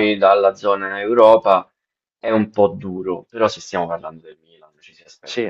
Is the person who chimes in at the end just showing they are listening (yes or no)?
yes